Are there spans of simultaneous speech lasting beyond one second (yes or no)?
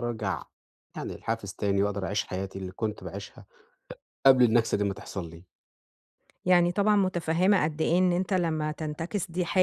no